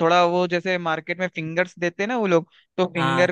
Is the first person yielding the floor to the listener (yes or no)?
no